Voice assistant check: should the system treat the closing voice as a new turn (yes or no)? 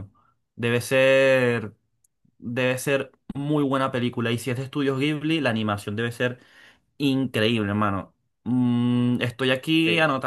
no